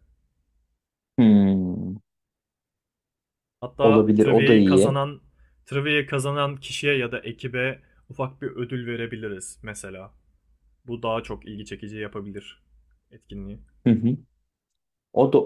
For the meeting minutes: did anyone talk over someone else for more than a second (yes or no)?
yes